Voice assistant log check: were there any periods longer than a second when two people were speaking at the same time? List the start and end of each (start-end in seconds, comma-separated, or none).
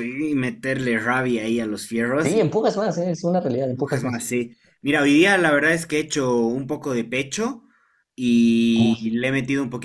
none